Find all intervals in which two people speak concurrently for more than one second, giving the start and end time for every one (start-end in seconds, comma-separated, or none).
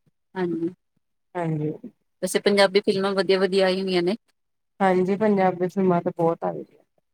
none